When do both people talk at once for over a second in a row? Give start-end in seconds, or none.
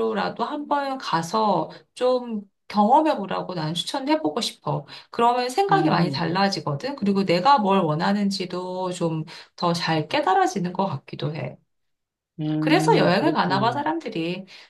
12.6-13.8